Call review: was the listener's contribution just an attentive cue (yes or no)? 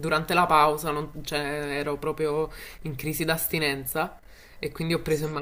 yes